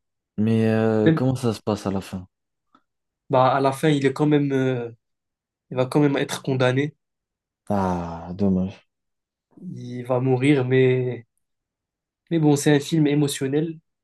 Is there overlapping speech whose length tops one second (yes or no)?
no